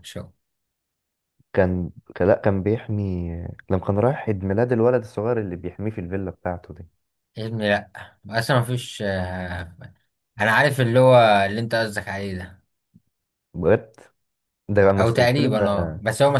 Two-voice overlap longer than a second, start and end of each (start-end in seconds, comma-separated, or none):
none